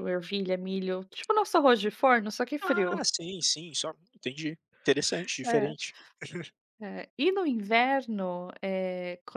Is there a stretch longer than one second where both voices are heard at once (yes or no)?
no